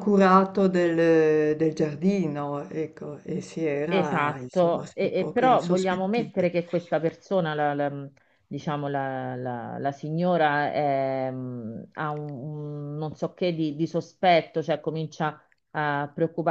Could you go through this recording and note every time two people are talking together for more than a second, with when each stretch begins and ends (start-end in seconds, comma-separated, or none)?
3.9-6.5